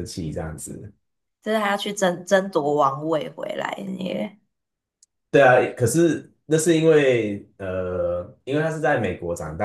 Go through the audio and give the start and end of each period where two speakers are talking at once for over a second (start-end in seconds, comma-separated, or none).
none